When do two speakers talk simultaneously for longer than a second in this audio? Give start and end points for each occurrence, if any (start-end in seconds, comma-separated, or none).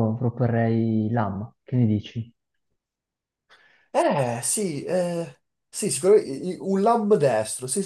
none